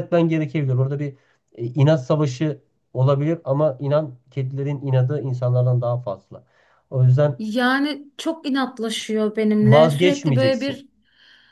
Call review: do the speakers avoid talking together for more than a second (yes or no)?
no